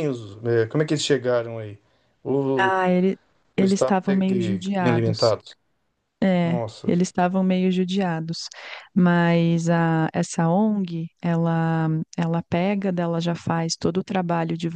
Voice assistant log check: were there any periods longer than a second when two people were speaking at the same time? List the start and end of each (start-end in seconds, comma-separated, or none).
3.6-5.3